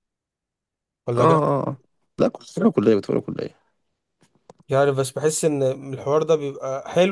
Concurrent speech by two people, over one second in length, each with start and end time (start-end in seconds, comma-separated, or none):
none